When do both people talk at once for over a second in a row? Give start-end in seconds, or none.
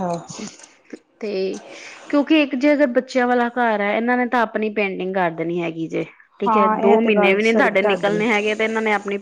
6.5-8.2